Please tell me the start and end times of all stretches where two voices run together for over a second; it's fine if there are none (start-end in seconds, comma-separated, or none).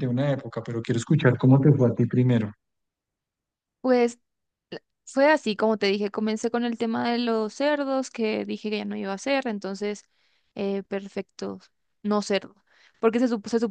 none